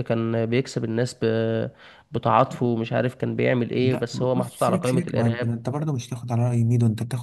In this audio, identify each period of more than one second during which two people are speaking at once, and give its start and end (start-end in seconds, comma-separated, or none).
3.8-5.5